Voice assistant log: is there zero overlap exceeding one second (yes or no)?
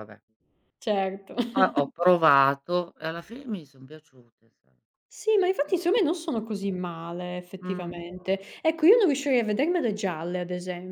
yes